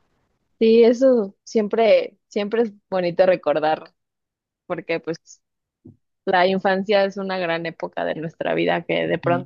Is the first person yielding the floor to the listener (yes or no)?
no